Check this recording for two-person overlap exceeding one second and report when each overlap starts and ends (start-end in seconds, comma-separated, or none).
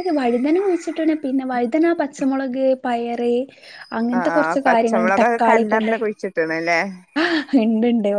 4.2-5.9